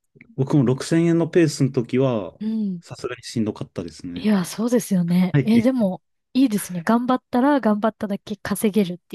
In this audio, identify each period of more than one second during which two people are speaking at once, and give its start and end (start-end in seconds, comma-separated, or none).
none